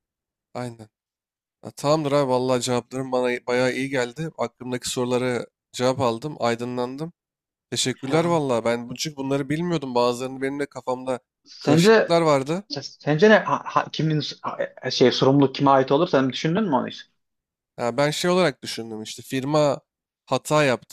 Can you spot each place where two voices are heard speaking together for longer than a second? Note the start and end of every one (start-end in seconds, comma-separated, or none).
none